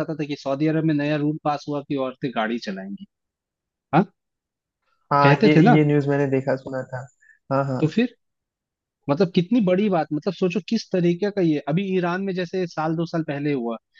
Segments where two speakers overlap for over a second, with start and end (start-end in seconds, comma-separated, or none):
none